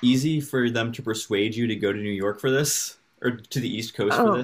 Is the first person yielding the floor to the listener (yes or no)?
yes